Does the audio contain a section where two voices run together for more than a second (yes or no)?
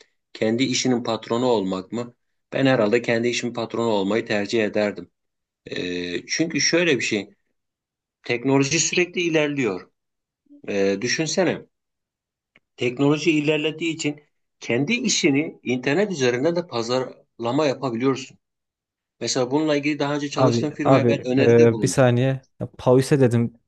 yes